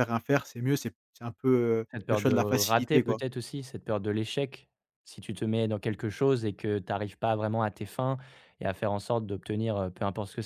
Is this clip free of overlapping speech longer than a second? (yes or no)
no